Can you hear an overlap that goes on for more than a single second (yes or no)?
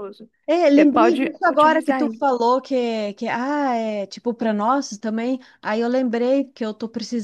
yes